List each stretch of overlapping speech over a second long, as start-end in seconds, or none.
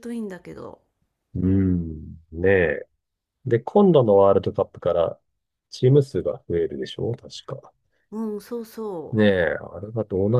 none